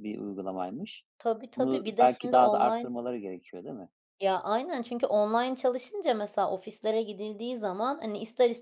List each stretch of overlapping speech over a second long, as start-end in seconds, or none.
1.6-2.9